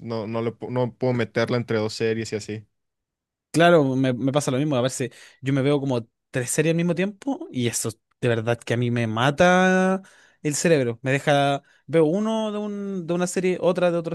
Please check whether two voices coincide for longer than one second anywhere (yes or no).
no